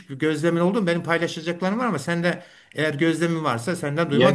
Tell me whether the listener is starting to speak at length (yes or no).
yes